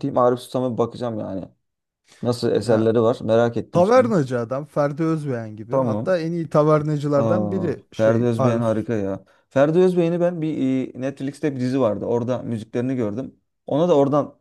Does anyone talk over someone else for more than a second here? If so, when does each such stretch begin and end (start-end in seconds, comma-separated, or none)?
7.2-8.8